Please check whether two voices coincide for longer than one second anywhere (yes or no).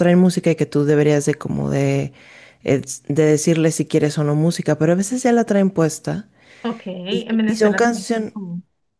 yes